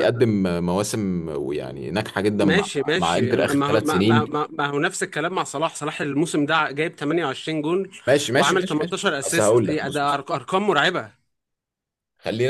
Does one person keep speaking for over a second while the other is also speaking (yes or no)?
yes